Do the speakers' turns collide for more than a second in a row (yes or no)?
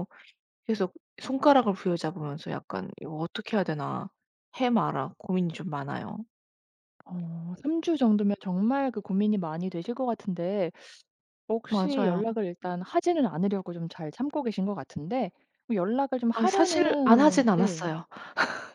yes